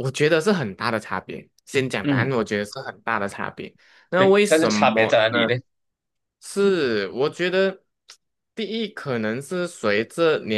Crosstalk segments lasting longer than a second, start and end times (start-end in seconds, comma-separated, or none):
4.2-5.6